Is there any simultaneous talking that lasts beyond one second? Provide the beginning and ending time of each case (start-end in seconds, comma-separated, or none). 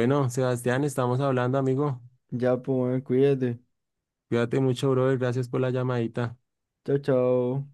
none